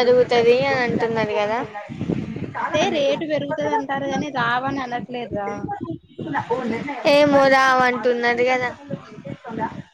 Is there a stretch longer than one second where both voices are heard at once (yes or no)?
no